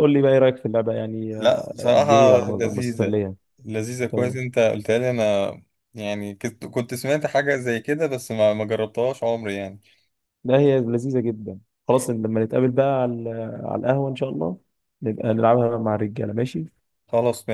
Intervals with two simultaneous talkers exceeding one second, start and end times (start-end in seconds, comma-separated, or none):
1.4-3.2